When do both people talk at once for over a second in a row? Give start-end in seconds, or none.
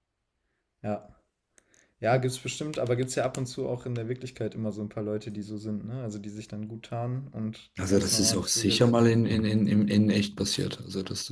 7.8-9.1